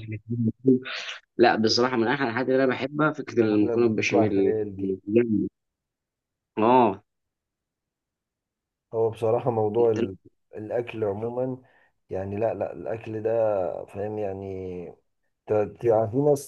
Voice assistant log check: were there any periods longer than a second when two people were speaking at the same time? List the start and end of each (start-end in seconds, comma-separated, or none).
3.3-4.5